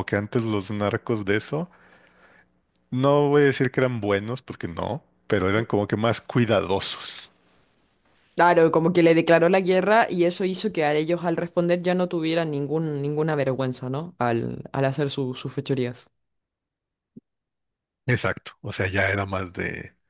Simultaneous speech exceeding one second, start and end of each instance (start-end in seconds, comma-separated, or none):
none